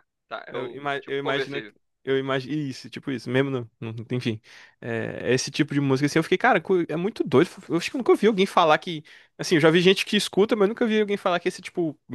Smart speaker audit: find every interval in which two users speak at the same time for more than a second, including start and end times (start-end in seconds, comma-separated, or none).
0.5-1.7